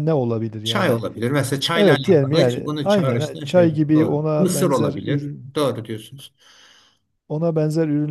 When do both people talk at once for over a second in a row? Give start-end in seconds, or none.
1.7-5.5